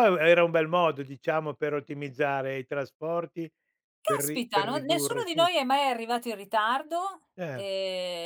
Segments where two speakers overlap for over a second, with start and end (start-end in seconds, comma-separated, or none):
4.0-5.5